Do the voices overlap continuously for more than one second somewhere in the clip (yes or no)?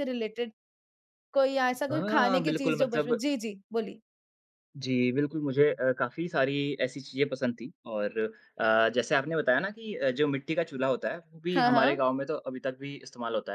yes